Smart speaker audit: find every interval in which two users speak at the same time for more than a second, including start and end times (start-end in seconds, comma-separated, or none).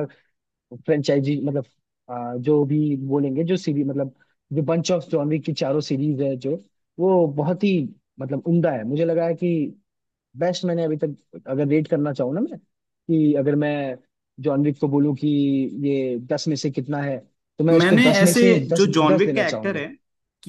17.7-19.8